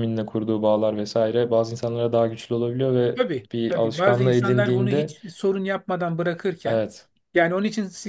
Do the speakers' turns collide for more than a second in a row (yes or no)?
yes